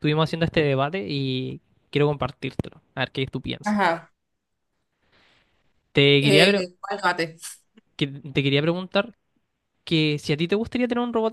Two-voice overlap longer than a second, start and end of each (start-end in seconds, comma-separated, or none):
none